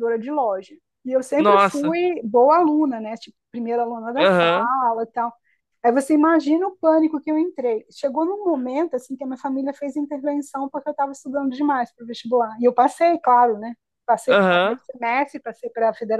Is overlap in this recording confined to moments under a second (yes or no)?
yes